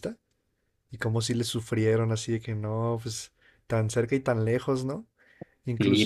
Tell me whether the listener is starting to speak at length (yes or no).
yes